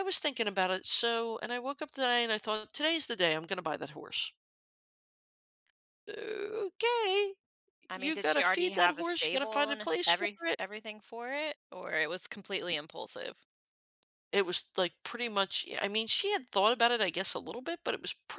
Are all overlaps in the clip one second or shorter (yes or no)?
no